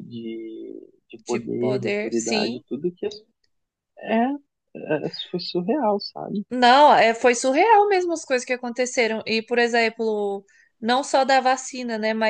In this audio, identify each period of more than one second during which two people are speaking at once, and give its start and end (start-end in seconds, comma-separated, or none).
1.2-2.6